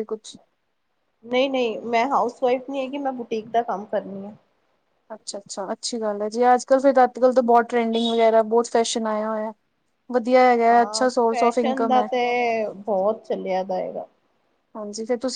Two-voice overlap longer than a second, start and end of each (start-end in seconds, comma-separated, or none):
none